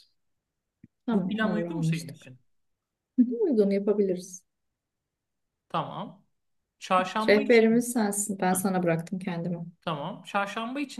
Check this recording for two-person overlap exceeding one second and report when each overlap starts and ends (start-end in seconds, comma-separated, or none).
1.1-2.3